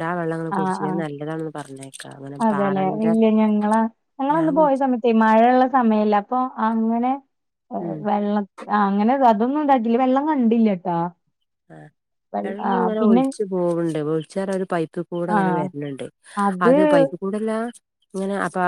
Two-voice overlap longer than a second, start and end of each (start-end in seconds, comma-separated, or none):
none